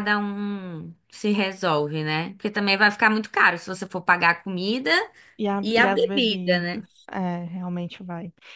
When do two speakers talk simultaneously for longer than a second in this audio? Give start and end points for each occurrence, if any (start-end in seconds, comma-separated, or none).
5.6-6.8